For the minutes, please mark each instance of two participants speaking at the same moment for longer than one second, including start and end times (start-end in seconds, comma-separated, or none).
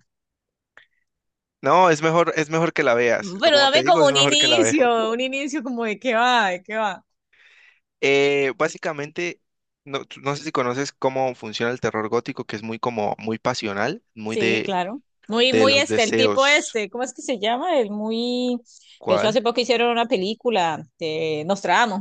3.4-4.8, 15.4-16.8